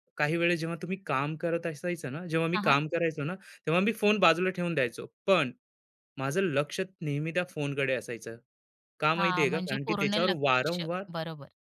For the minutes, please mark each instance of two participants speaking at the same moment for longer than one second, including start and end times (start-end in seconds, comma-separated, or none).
9.2-10.8